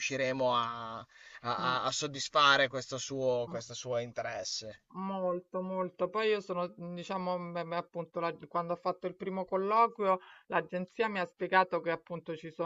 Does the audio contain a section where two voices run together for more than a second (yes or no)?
no